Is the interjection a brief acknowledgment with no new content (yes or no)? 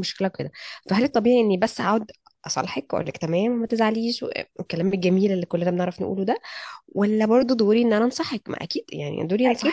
no